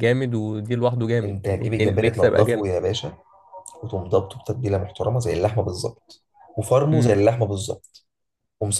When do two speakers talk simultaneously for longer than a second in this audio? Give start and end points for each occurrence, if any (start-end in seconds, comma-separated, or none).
1.2-2.7